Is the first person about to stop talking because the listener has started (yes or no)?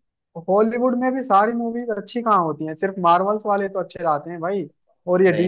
no